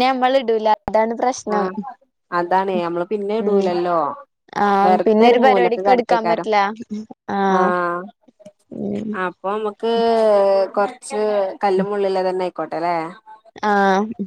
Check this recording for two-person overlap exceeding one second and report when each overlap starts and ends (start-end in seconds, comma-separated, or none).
4.8-6.5